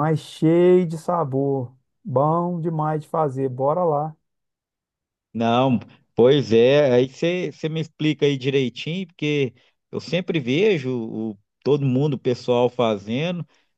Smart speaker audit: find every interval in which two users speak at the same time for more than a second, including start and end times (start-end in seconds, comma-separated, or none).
none